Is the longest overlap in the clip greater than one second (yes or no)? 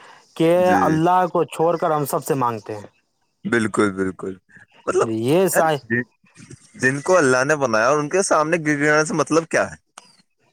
no